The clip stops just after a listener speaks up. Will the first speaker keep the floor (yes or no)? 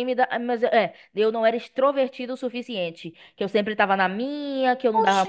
no